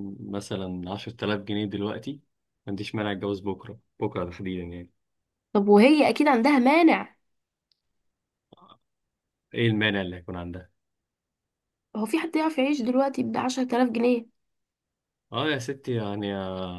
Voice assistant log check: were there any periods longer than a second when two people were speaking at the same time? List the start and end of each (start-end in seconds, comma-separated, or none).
none